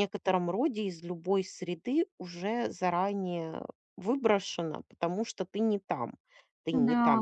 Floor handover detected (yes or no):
no